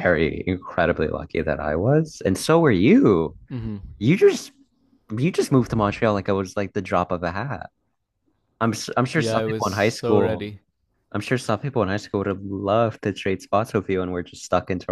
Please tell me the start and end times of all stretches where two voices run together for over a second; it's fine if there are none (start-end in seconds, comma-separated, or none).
9.1-10.5